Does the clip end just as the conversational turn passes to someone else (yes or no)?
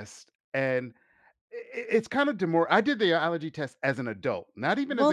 yes